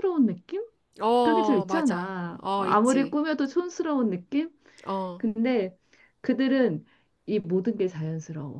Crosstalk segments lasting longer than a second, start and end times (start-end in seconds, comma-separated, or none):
1.2-3.2